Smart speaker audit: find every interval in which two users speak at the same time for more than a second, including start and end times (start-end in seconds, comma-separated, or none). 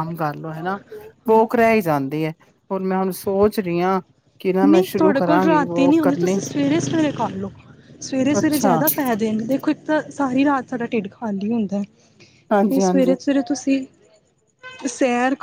4.7-6.3